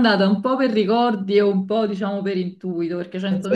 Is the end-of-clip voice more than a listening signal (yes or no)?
yes